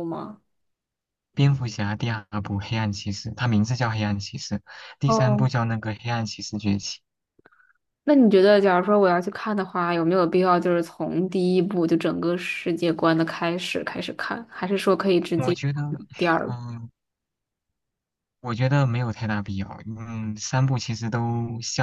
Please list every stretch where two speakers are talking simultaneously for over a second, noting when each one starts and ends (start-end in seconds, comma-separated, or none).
none